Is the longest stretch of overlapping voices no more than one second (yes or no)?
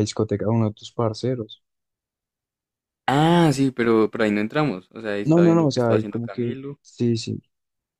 no